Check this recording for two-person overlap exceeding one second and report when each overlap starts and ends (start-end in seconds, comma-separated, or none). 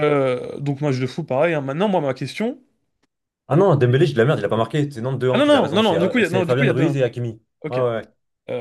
5.3-7.0